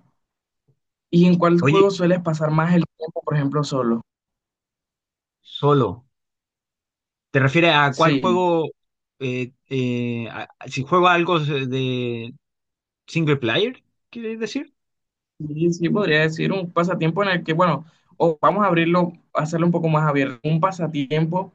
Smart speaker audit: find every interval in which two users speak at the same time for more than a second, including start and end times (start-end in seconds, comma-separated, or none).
none